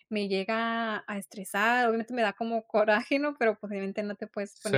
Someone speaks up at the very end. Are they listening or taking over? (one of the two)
listening